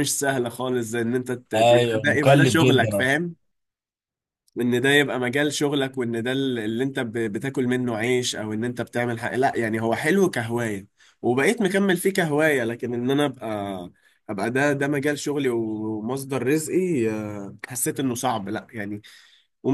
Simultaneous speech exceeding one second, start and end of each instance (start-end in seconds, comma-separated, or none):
1.6-3.2